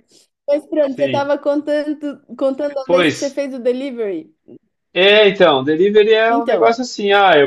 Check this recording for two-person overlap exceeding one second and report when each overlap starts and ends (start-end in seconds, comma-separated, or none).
none